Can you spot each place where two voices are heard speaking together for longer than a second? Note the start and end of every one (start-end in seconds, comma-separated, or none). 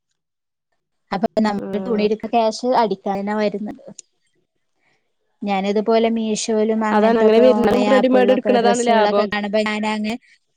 7.0-9.2